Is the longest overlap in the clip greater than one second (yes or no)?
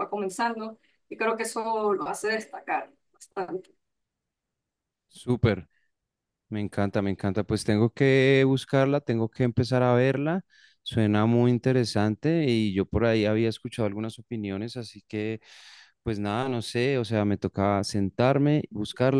no